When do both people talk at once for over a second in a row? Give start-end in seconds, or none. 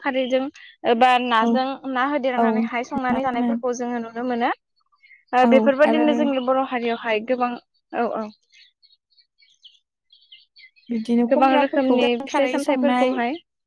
11.3-13.1